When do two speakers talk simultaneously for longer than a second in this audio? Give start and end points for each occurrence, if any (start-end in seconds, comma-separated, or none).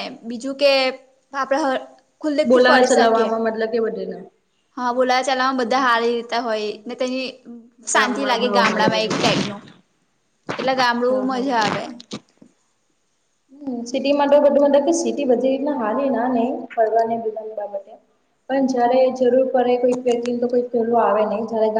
8.0-9.4